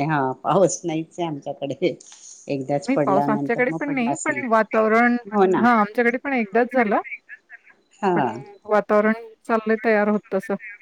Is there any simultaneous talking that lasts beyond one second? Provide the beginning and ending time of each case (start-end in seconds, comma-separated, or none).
2.9-4.4